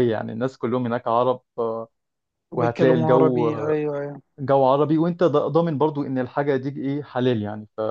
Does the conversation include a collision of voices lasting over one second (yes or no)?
yes